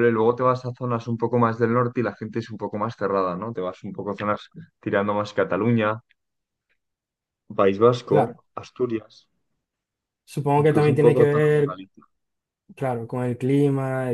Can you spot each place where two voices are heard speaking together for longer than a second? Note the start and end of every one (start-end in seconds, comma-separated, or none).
10.6-11.8